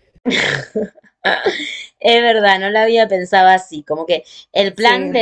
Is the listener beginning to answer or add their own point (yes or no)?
no